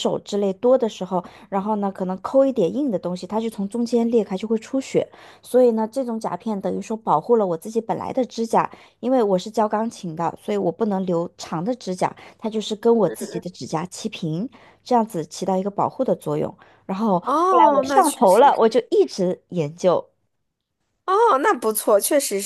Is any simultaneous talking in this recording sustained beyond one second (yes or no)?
yes